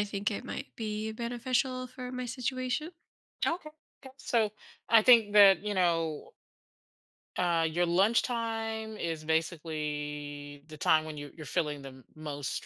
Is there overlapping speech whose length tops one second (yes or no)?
no